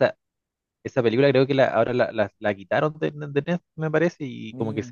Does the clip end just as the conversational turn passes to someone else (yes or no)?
no